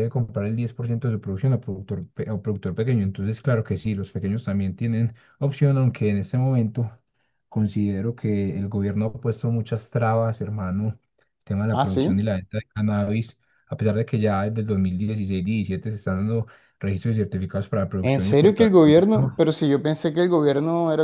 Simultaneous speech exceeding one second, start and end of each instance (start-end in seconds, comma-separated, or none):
18.0-19.4